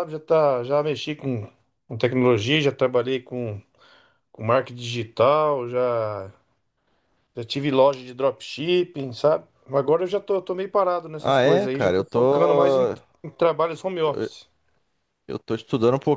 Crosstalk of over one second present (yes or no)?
yes